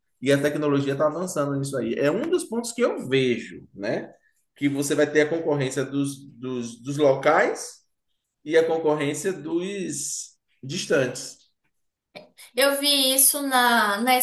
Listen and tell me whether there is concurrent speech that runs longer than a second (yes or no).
no